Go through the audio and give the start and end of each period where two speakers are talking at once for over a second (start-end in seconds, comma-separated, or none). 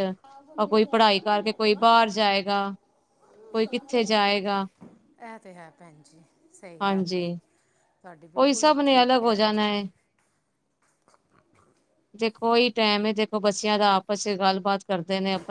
8.4-9.8